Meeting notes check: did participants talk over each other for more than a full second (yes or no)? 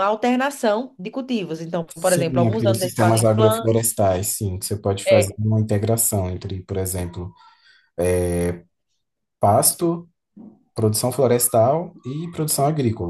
yes